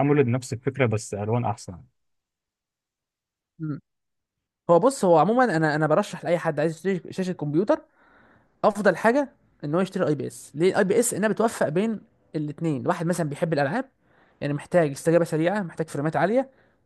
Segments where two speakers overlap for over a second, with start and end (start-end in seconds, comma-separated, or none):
none